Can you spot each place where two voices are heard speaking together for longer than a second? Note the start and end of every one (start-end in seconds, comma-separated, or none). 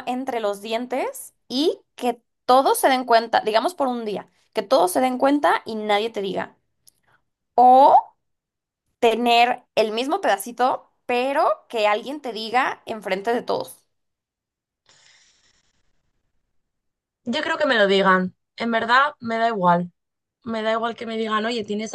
none